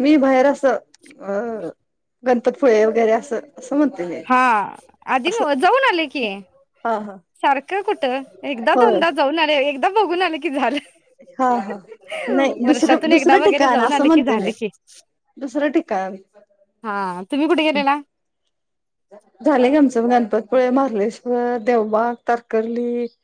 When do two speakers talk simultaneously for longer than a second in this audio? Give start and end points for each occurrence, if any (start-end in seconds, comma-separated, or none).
12.6-14.5